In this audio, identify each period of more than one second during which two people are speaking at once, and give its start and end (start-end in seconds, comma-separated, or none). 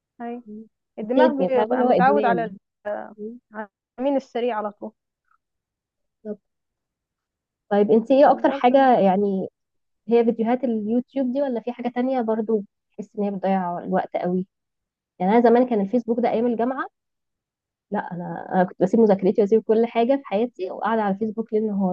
1.0-2.5